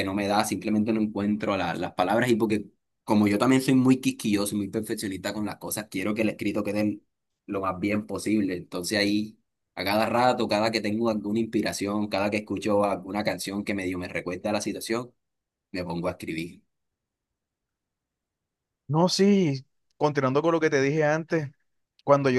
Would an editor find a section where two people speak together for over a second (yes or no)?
no